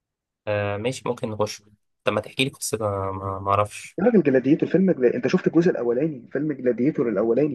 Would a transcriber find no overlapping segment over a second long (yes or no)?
yes